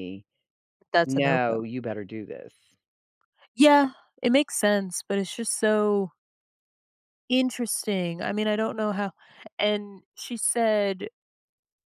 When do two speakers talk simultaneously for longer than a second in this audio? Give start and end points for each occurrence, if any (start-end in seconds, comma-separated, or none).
none